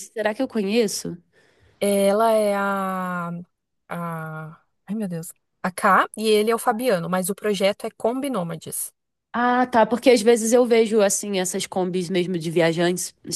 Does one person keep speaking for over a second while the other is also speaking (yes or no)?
no